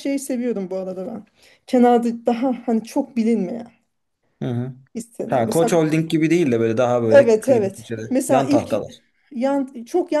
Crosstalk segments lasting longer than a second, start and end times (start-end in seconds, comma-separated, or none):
7.1-8.7